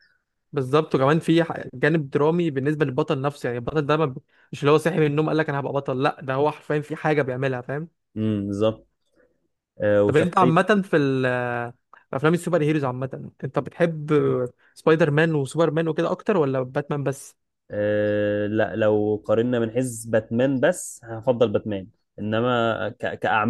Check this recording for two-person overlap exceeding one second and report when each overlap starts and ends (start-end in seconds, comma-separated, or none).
none